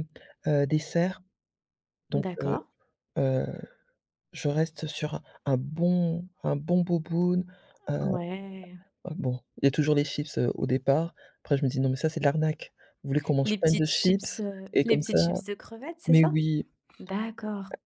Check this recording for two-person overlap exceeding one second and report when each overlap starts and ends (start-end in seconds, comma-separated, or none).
13.4-15.2